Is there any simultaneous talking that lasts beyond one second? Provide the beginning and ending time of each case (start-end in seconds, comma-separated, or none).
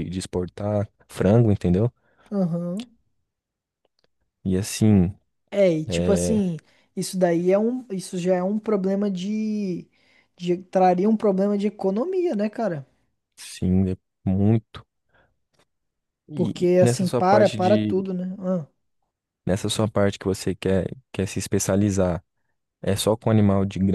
16.3-18.0